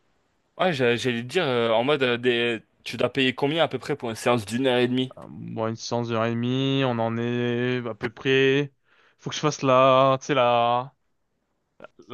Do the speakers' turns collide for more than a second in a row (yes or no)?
no